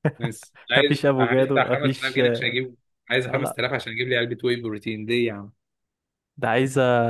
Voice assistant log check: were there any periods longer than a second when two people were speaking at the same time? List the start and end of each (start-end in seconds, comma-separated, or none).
0.8-2.5